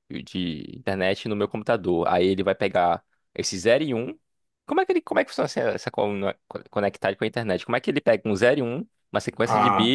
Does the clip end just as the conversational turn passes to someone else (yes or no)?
no